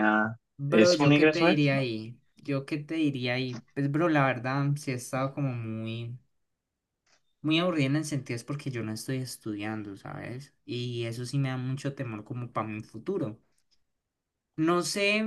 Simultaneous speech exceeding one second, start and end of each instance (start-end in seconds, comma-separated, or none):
0.6-1.8